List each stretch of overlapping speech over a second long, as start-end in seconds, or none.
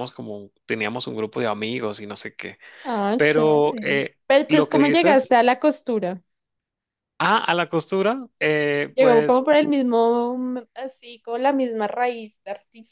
3.1-5.3